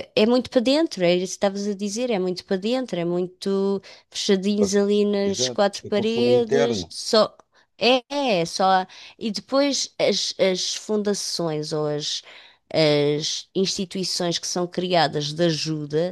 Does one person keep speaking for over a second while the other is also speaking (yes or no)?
yes